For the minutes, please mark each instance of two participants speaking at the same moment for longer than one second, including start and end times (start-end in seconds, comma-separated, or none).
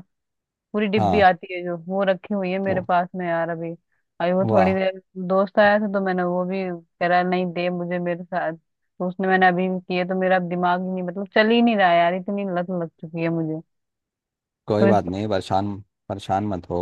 none